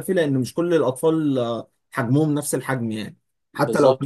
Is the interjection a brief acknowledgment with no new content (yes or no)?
no